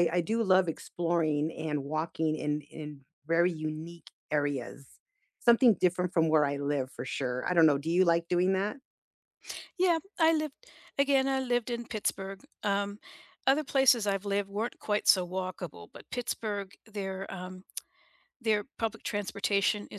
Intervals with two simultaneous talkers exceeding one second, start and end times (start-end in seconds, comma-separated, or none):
none